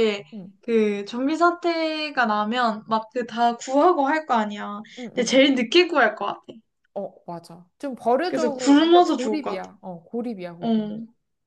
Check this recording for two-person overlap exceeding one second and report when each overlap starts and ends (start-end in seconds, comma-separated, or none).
8.3-9.7